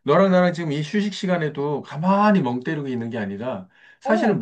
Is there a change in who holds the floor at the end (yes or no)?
no